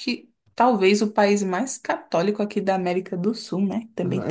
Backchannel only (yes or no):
no